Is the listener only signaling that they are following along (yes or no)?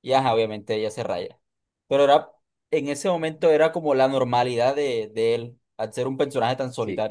no